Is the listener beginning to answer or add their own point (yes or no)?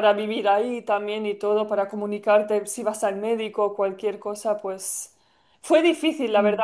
no